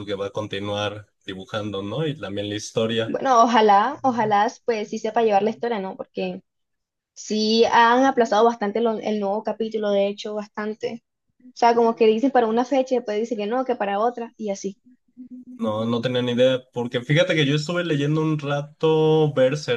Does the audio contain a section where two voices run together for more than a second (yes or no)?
no